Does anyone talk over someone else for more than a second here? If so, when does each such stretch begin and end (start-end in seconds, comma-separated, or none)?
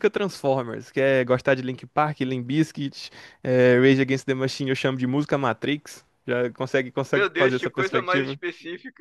7.1-8.4